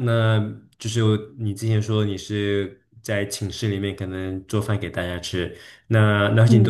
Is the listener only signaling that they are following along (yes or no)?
yes